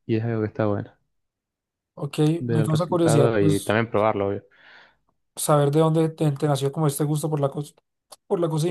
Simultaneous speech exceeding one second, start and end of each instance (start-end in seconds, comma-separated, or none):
2.4-3.8